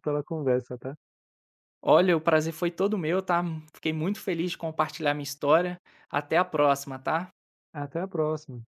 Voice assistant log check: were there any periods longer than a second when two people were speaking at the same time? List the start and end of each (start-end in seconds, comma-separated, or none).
none